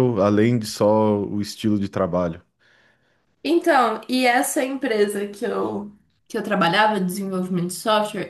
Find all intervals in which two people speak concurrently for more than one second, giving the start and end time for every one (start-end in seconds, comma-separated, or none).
none